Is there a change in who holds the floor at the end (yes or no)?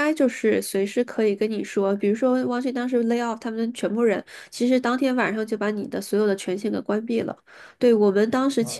no